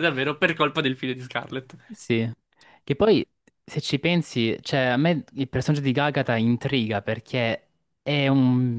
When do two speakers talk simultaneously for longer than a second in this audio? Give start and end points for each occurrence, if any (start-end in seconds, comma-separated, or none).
none